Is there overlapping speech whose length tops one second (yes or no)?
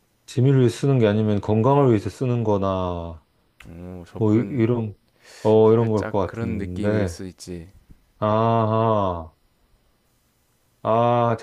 yes